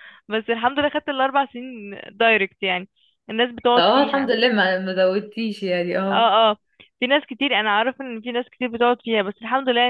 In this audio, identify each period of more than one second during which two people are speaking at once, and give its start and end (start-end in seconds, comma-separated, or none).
none